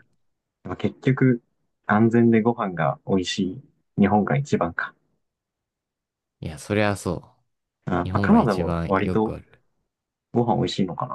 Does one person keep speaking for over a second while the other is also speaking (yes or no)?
yes